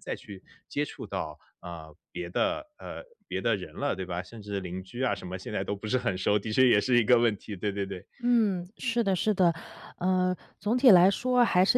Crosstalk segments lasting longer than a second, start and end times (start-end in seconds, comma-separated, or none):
none